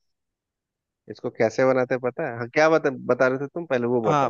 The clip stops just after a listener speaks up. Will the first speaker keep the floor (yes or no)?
no